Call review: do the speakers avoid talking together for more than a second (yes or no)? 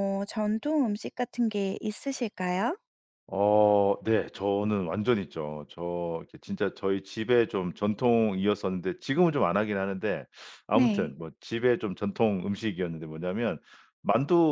yes